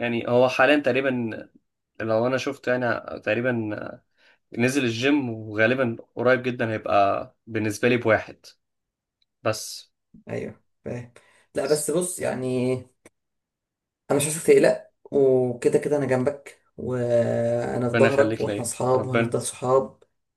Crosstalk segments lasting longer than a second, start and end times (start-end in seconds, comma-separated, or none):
17.9-19.4